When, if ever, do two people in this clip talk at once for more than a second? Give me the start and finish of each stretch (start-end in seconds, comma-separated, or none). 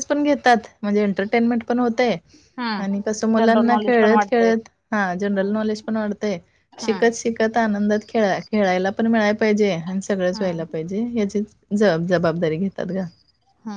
2.8-4.5